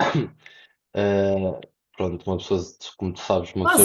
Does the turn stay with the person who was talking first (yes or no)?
no